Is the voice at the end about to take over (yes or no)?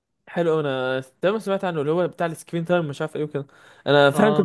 no